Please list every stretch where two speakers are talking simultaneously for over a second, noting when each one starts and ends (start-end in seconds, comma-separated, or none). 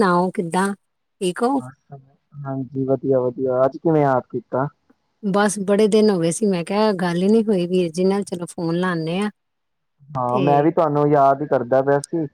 none